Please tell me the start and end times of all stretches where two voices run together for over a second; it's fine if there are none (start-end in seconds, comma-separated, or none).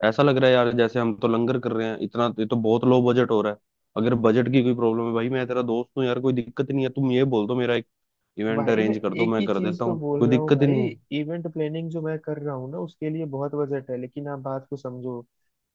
8.6-10.7